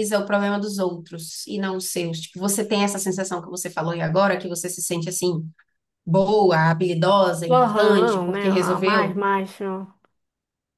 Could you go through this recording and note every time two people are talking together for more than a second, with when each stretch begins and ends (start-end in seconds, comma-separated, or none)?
7.5-9.2